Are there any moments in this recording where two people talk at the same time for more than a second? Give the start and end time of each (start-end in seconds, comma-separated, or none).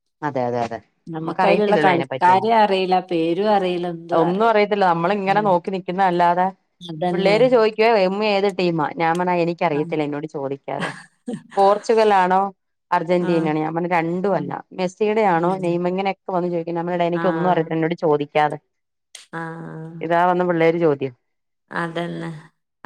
1.2-2.5